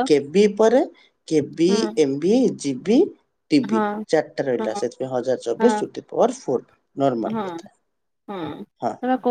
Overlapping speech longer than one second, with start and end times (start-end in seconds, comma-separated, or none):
none